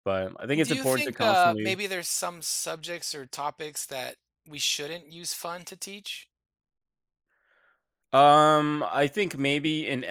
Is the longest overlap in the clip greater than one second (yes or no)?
yes